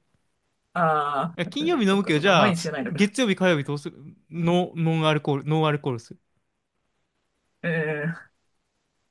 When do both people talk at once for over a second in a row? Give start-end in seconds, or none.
1.4-3.1